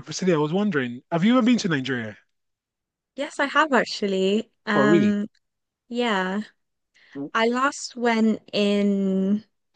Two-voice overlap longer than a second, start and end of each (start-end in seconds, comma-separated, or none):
none